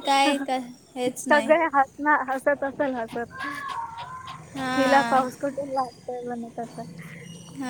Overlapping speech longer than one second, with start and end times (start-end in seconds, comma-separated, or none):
none